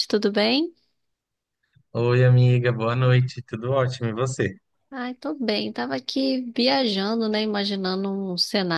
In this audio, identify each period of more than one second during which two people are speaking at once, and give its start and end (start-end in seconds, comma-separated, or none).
none